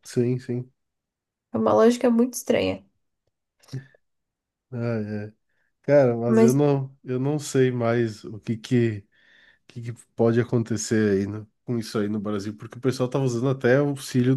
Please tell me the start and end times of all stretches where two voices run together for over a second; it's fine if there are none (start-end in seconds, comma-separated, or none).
none